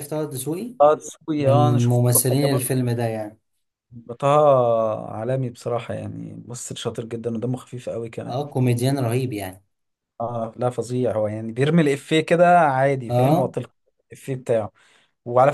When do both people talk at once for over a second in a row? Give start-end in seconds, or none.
1.4-2.7